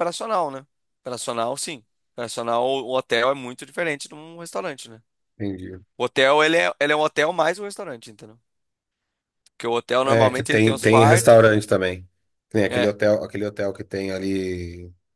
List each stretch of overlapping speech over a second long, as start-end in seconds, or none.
10.0-11.6